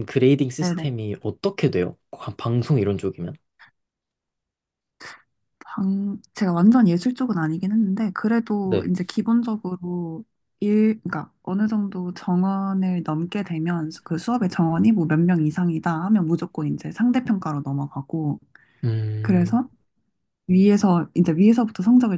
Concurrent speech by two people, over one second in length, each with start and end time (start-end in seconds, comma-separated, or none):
none